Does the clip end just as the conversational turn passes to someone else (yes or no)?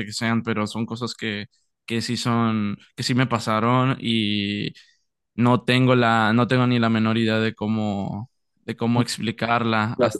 yes